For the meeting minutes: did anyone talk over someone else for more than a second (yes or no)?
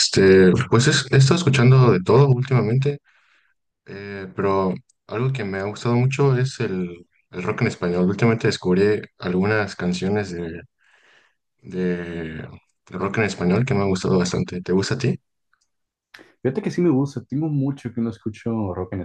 no